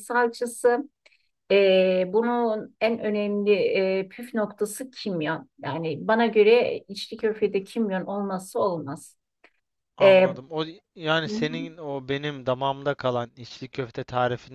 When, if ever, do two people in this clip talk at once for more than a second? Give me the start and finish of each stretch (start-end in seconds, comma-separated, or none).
none